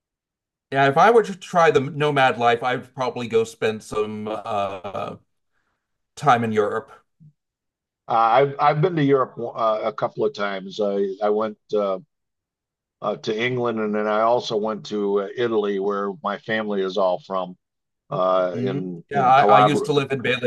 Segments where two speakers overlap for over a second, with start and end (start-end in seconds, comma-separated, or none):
18.5-19.9